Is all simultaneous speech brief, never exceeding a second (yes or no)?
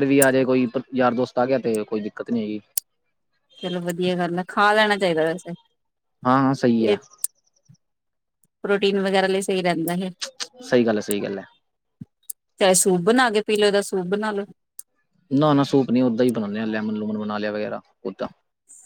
yes